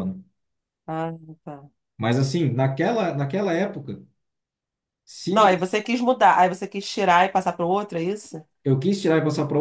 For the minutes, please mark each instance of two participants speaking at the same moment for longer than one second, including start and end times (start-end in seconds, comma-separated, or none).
none